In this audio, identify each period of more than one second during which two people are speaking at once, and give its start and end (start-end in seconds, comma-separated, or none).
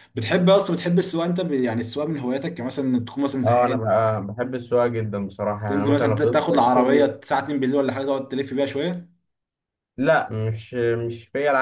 5.7-7.1